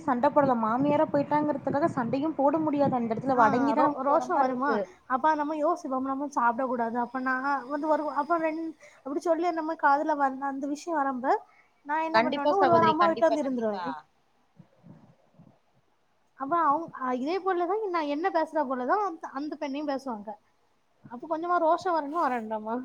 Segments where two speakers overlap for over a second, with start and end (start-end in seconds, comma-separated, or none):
12.1-13.8